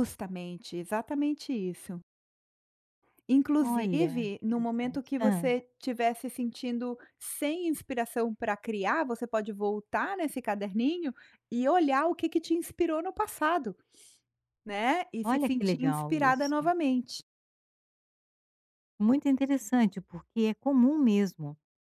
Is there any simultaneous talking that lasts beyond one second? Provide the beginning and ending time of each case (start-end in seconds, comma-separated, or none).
3.6-5.5, 15.2-16.7